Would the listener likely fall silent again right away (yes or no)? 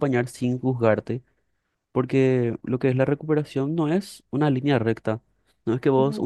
yes